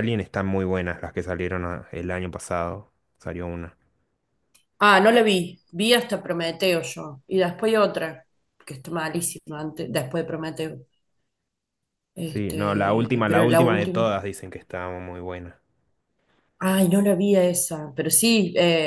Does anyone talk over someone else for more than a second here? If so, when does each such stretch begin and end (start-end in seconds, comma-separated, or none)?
12.2-14.0